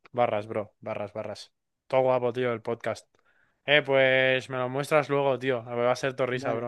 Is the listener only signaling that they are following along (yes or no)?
yes